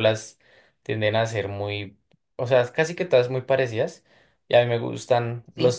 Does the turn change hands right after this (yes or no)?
no